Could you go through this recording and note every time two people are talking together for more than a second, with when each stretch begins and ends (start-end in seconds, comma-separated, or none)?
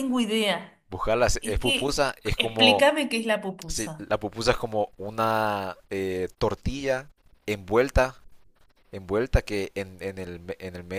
1.4-2.9